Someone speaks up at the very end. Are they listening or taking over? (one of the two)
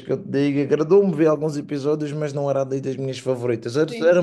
listening